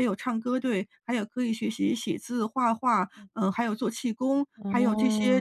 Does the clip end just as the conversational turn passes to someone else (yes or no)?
no